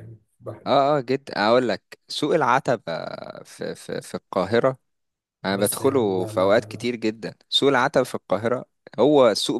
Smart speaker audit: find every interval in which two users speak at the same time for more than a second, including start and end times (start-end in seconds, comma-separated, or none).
5.5-6.9